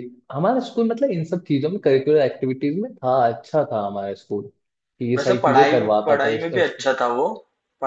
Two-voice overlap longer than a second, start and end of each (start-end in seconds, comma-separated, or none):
5.2-6.8